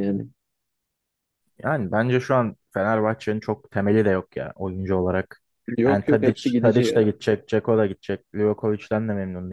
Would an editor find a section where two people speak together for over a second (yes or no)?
yes